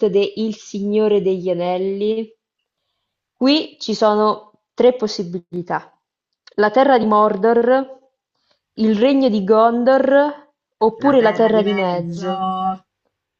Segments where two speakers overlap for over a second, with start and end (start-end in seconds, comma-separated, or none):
11.0-12.5